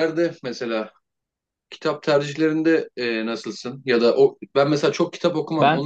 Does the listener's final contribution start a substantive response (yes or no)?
no